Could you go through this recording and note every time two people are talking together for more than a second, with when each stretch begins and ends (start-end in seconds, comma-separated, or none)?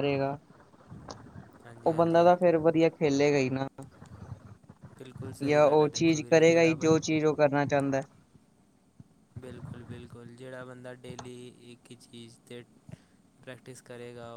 5.5-7.0